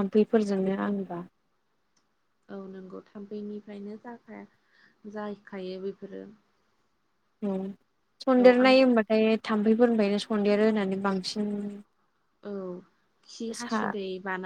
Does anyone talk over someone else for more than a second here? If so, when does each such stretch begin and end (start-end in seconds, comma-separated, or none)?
none